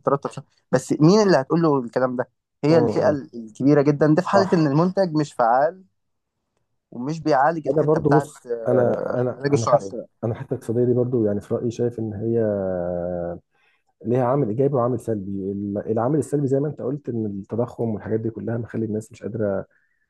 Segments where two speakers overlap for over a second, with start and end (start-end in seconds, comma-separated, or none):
7.7-10.0